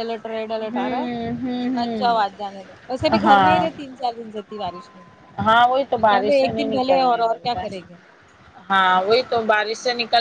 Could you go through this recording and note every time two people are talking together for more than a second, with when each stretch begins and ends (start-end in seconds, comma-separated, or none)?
0.7-2.4, 6.1-7.9